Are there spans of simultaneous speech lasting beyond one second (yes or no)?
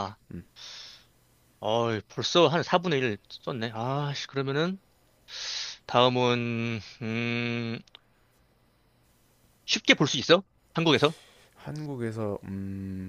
no